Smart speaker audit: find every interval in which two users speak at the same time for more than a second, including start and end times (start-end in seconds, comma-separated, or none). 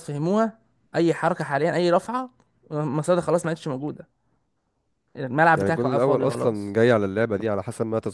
5.6-6.8